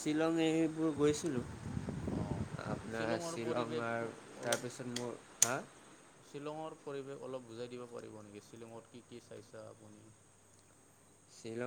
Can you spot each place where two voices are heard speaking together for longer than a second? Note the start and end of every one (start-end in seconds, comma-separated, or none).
none